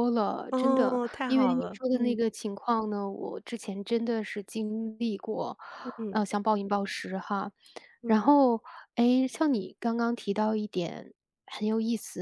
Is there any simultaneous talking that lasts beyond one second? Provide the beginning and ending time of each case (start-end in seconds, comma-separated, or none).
0.5-2.2